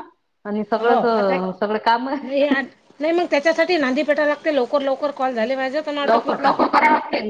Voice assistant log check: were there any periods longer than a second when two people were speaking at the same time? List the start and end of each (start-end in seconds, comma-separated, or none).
none